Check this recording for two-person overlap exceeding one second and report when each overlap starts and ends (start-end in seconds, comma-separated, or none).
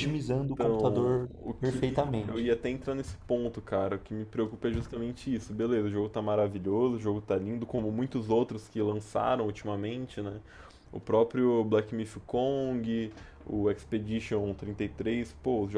0.5-2.5